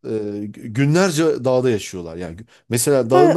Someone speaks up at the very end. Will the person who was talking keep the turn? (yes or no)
no